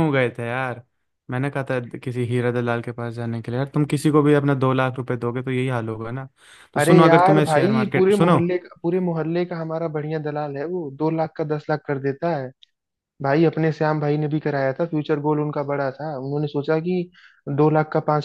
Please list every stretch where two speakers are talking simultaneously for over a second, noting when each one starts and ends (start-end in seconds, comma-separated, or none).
6.8-8.4